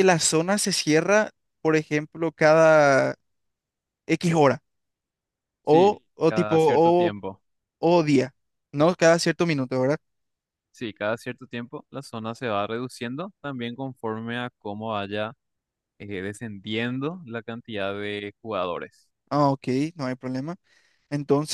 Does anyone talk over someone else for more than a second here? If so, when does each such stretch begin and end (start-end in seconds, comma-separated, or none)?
5.6-7.1